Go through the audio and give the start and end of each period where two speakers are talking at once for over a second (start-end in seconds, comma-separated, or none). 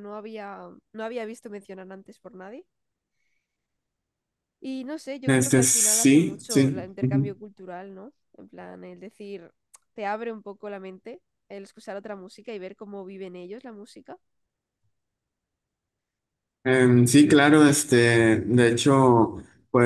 5.3-6.9